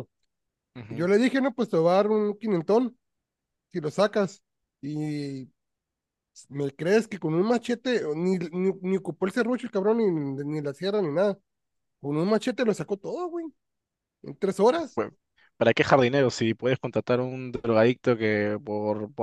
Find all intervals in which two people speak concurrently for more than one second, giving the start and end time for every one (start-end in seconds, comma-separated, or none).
none